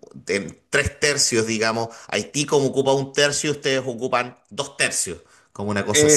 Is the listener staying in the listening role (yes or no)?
no